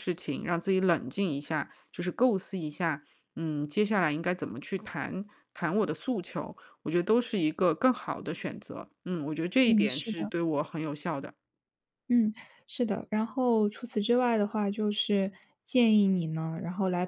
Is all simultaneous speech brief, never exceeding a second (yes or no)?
yes